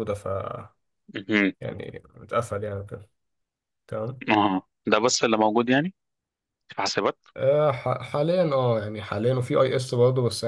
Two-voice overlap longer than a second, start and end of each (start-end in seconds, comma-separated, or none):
none